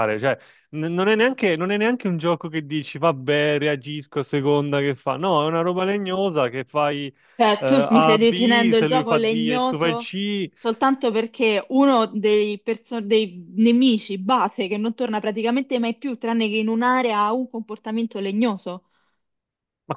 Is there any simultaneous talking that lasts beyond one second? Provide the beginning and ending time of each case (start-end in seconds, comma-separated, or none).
7.6-10.2